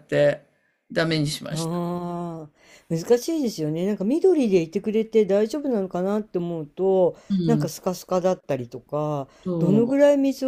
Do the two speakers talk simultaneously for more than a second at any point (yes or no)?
no